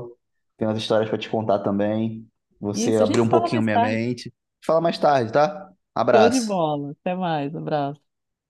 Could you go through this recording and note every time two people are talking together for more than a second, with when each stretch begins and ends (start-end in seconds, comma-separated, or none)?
2.7-4.0